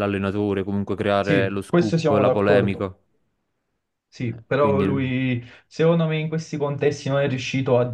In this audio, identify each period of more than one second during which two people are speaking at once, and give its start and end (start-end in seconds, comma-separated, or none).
1.2-2.9